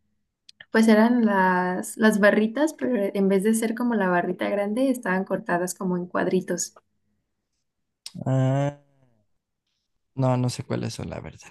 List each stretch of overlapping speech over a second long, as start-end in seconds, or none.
none